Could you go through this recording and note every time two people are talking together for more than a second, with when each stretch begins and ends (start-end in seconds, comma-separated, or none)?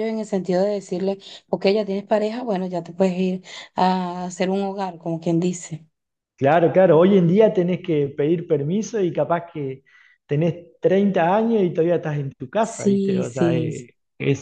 12.6-13.8